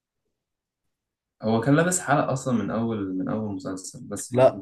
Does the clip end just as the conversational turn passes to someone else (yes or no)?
yes